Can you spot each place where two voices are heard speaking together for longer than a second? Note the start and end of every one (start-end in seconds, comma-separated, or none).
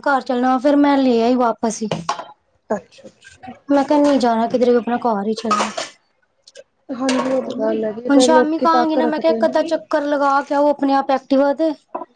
8.2-9.6